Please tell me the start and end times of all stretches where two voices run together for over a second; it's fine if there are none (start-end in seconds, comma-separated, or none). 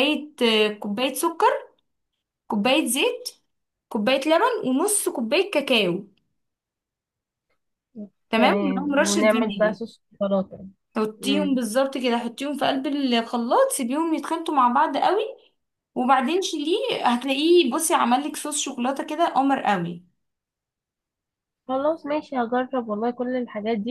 8.4-9.8